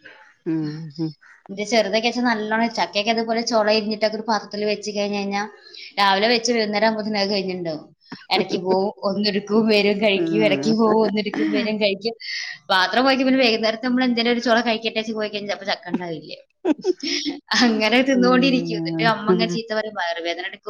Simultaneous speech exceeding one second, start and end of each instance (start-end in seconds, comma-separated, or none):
18.2-19.6